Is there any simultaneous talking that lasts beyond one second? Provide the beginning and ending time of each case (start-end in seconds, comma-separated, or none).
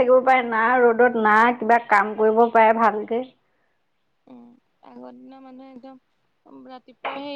none